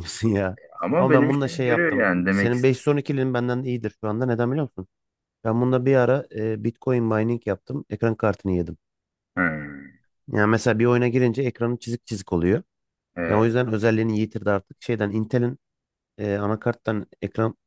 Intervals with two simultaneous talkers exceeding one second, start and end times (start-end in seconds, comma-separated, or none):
1.0-2.5